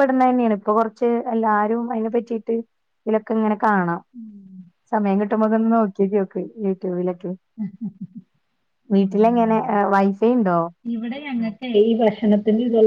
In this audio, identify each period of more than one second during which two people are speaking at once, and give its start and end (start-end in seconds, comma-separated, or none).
none